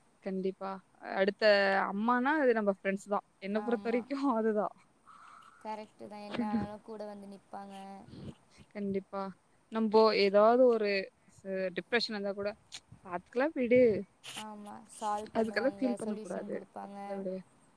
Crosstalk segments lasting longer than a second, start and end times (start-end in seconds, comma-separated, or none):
15.4-17.0